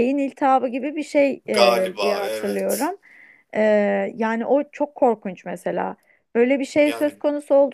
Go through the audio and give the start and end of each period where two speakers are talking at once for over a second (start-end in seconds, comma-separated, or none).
1.5-2.9